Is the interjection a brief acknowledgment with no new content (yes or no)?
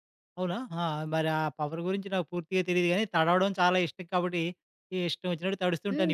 no